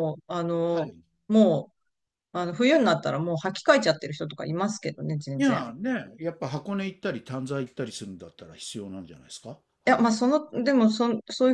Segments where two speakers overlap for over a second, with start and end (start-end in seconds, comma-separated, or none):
none